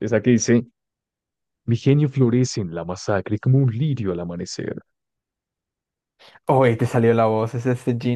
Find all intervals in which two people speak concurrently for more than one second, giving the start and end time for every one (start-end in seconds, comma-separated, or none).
none